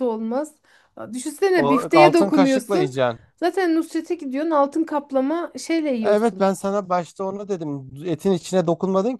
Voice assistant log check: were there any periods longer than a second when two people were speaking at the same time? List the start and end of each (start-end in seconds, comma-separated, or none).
1.5-2.9